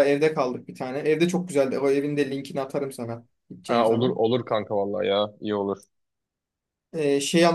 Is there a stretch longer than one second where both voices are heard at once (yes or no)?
no